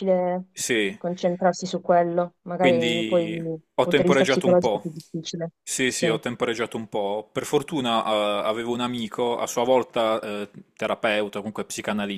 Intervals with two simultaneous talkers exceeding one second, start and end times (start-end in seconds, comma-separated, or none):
2.6-4.9